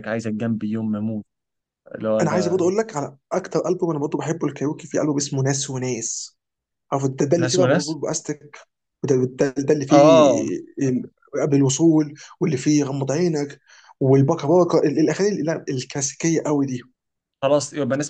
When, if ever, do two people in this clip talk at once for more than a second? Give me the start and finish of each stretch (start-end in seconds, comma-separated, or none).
none